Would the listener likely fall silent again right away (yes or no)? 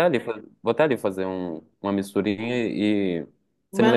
yes